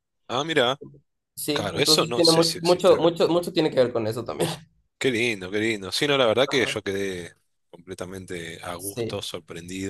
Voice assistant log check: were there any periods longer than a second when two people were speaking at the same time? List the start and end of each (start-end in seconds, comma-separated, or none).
1.5-3.1